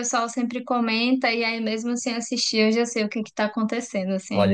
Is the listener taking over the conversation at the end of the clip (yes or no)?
yes